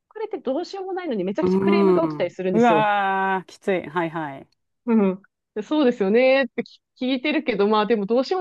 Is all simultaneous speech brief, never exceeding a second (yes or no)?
no